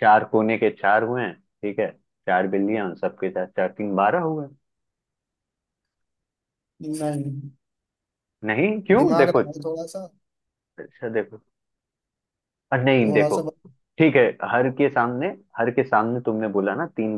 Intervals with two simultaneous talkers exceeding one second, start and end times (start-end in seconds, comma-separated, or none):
none